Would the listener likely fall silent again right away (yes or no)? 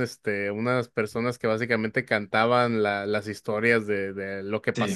yes